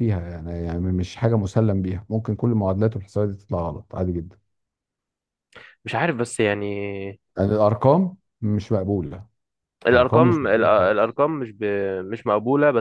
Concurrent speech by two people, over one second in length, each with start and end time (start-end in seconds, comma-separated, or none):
9.9-11.2